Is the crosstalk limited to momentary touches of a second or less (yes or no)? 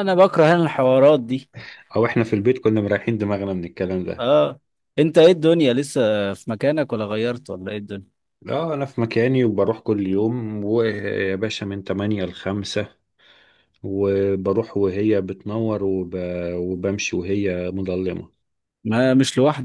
yes